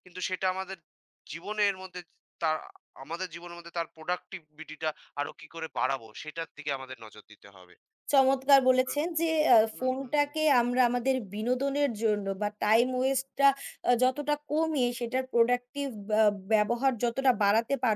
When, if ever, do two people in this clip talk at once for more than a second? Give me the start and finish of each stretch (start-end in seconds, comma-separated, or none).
none